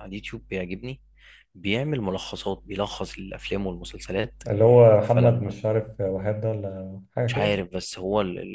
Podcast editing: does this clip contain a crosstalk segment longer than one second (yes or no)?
no